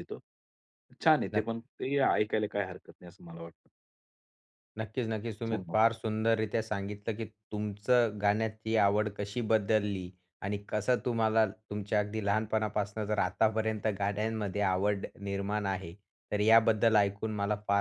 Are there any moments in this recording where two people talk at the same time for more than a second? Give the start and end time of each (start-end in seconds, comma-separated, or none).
none